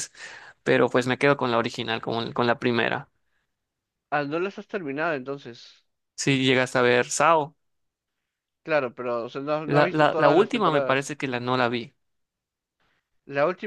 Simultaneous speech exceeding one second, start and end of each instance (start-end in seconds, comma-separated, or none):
9.7-11.2